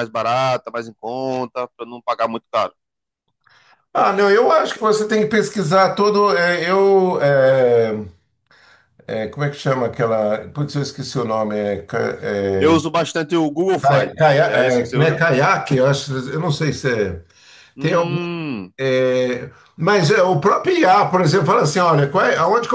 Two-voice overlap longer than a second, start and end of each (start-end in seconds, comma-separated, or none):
13.8-15.2